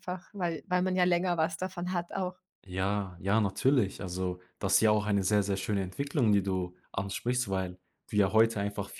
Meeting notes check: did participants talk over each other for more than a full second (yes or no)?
no